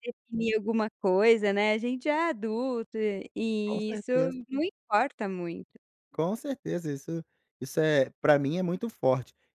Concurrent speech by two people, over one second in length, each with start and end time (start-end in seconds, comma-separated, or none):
none